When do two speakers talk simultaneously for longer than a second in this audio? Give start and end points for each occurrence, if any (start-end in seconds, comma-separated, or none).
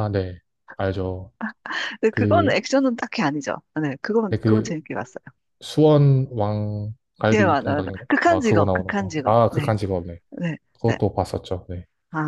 7.3-9.7